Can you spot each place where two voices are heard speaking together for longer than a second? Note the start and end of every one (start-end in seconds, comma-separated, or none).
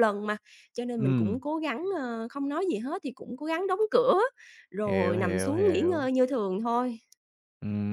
4.8-6.1